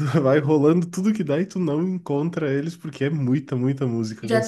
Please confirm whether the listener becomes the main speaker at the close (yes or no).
yes